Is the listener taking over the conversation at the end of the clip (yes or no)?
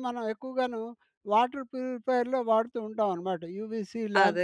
yes